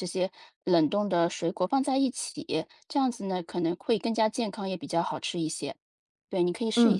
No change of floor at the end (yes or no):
no